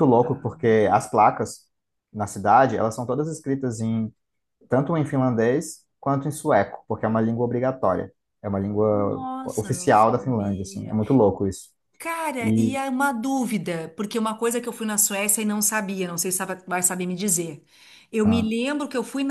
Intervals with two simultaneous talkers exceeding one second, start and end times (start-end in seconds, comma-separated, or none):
8.9-11.0